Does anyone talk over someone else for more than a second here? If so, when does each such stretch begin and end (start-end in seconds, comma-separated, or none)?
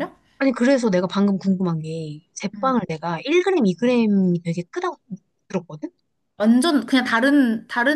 none